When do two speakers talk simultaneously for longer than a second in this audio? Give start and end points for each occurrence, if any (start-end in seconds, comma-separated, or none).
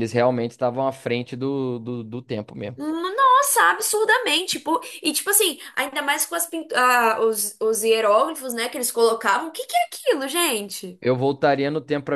none